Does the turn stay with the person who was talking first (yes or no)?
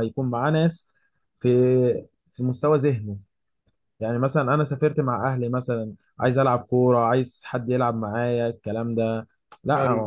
yes